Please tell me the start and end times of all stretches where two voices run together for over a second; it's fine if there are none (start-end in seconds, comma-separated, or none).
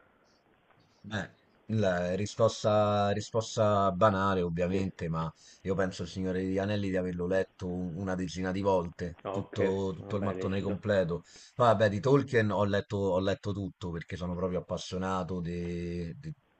9.2-10.8